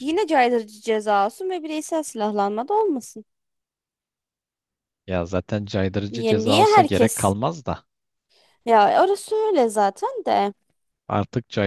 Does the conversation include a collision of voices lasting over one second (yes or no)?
yes